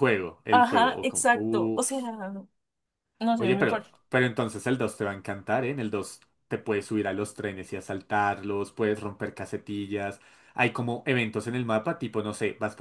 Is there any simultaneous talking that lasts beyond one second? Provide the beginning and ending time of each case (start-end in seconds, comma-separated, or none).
0.5-2.0